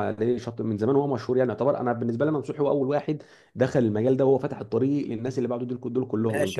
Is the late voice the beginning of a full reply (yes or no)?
yes